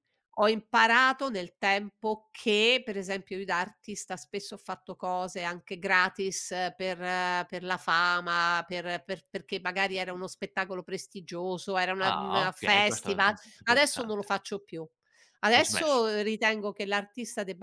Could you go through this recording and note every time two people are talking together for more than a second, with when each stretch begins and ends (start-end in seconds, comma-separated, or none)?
12.0-14.3